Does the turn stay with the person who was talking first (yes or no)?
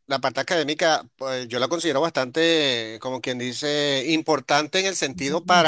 yes